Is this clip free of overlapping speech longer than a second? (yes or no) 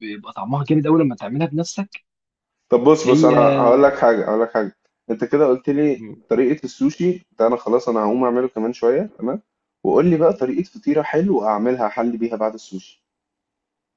yes